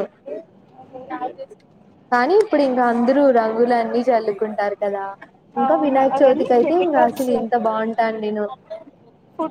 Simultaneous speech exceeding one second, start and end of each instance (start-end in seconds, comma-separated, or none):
5.6-7.3